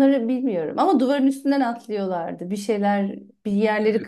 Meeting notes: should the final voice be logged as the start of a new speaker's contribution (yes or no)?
yes